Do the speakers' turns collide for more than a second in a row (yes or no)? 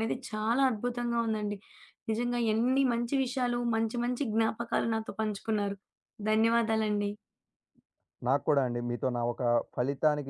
no